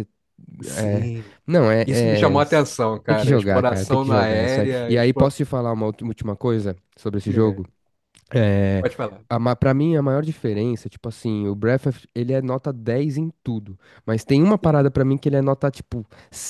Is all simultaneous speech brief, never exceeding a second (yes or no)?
no